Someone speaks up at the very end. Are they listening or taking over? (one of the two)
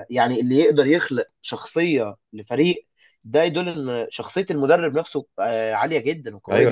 taking over